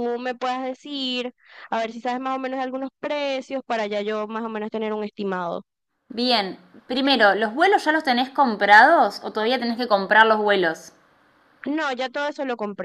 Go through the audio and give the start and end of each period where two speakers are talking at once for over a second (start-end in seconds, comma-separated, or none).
none